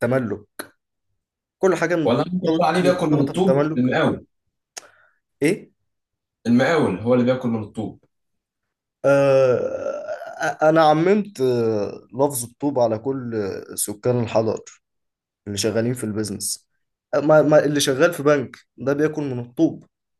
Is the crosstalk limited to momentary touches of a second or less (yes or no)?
no